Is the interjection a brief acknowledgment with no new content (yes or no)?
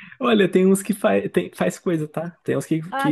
yes